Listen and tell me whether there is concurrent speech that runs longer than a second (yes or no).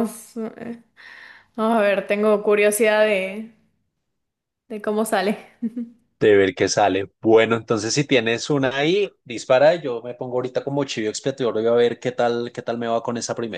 no